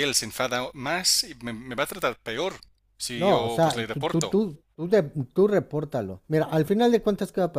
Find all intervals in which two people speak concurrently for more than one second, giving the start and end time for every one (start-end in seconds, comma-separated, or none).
3.1-4.3